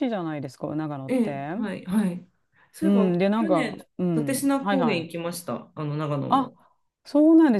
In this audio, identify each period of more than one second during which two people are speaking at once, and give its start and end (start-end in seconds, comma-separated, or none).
2.8-5.1